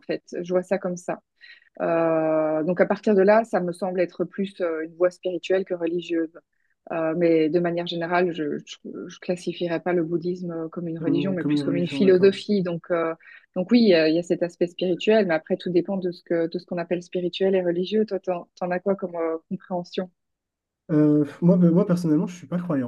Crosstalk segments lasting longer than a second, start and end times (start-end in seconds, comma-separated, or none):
11.0-12.4